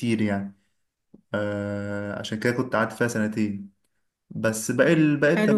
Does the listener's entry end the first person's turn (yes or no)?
no